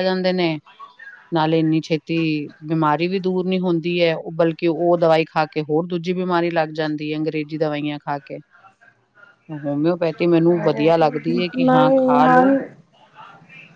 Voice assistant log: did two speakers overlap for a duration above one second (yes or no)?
yes